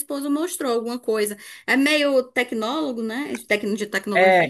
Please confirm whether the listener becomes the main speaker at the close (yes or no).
yes